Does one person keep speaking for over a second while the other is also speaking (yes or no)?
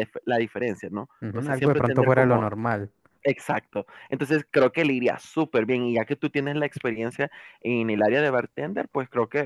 yes